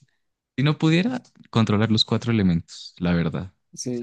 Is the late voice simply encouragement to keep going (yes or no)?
no